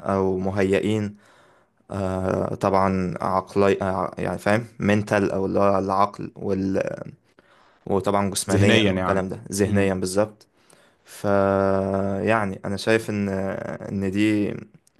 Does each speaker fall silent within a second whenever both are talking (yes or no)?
no